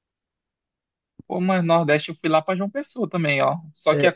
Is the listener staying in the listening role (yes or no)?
yes